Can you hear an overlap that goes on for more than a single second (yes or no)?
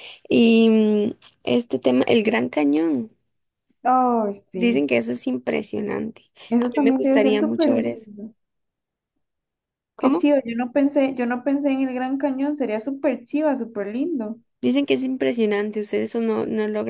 yes